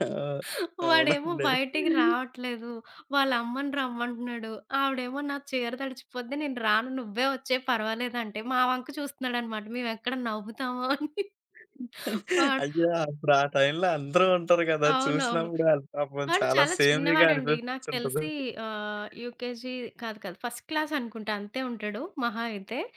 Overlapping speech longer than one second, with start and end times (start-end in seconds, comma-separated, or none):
16.3-18.2